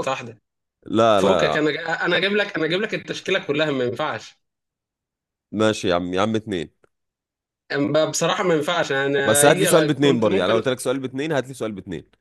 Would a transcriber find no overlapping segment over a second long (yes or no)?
no